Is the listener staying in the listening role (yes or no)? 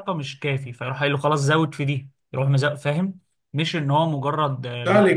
no